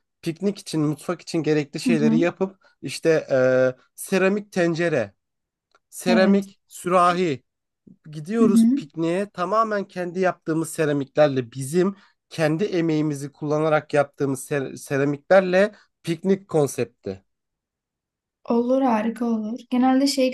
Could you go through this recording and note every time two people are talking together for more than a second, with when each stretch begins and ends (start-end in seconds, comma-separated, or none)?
none